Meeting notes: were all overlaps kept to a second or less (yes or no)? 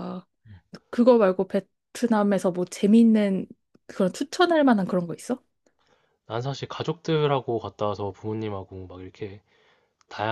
yes